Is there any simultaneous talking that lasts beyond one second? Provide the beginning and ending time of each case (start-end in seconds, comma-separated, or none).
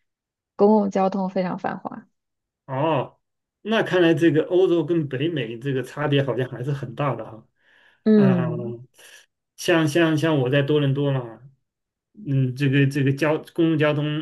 none